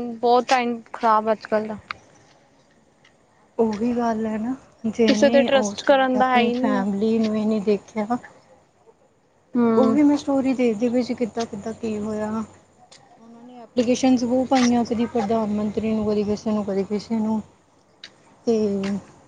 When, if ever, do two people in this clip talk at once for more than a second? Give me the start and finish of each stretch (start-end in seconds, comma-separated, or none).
5.1-6.9